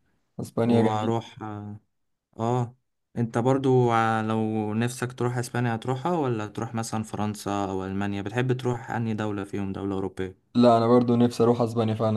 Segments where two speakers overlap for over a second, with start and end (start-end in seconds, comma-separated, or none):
none